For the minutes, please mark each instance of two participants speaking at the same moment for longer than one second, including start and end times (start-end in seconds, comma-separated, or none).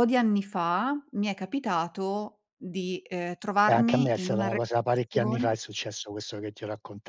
3.6-5.5